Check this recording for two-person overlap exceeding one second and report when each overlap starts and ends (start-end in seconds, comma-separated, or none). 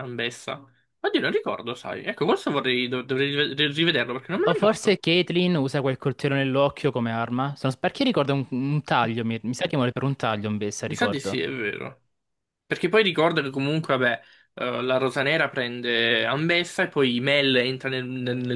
none